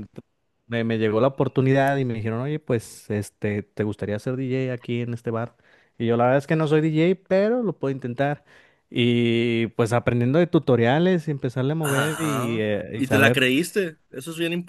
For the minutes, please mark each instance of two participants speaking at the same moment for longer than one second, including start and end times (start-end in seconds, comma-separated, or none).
11.8-13.4